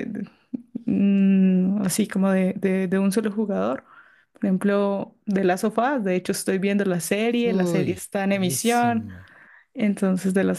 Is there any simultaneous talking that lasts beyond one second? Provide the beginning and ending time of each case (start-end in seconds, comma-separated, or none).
7.4-9.1